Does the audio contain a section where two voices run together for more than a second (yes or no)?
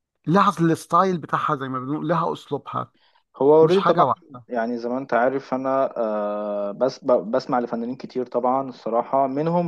no